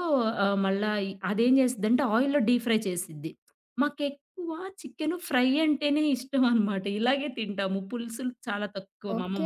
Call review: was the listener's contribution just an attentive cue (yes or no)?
no